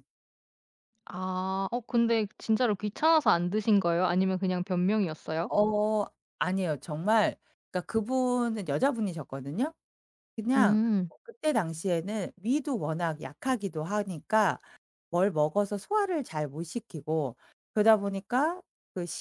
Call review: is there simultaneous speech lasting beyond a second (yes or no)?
no